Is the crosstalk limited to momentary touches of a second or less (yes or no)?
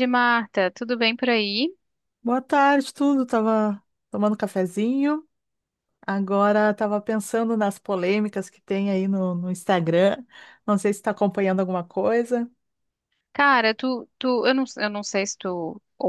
yes